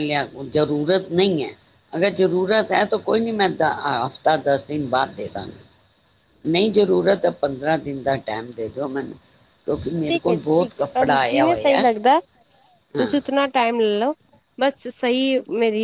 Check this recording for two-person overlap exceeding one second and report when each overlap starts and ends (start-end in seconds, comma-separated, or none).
10.1-11.8